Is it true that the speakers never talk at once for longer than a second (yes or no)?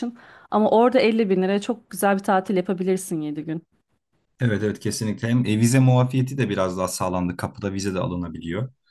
yes